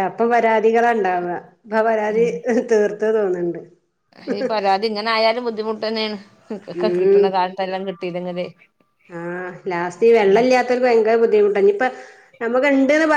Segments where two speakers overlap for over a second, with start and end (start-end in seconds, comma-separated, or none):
none